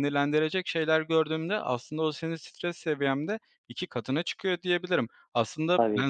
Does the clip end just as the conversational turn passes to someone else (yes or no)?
no